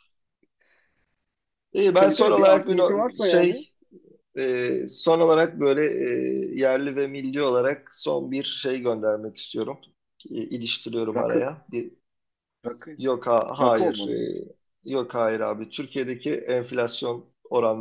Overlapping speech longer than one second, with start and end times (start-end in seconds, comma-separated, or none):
2.0-3.6